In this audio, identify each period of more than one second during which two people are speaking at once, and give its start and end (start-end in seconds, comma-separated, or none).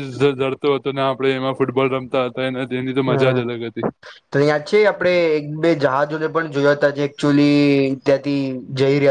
none